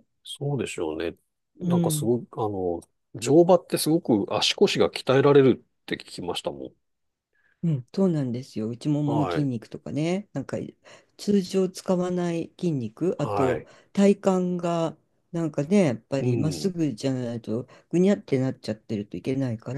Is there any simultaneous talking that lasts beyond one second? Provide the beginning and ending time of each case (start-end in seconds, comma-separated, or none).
none